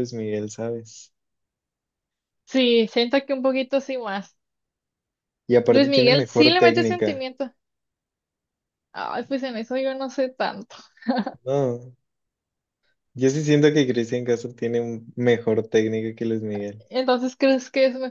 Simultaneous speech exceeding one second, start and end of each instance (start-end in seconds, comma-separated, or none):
5.7-7.2